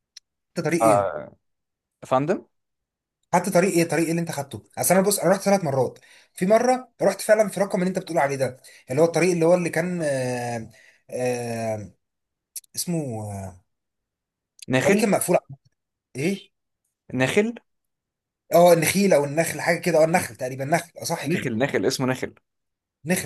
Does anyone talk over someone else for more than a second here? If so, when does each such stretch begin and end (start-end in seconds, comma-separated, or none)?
none